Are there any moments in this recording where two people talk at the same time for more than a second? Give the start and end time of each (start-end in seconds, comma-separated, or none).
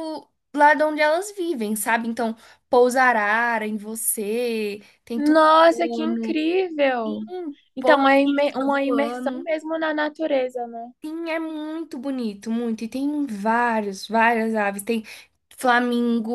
5.1-6.4, 7.8-9.5